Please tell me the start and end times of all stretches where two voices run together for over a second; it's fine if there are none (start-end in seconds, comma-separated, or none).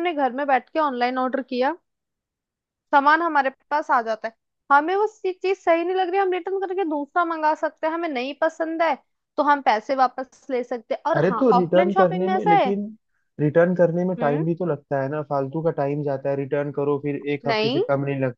11.2-12.7